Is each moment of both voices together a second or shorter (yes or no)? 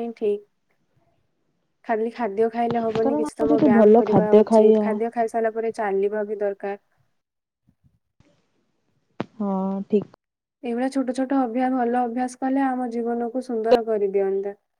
no